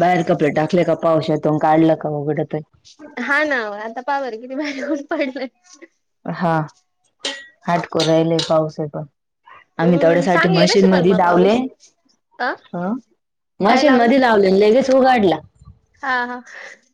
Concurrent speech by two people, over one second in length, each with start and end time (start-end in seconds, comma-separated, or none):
9.8-11.6